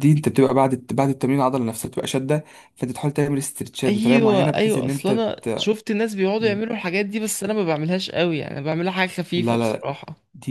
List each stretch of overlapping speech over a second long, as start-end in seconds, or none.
3.9-5.7